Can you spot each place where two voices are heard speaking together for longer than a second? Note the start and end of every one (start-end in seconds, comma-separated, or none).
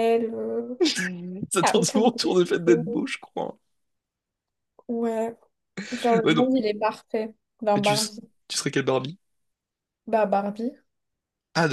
1.6-3.0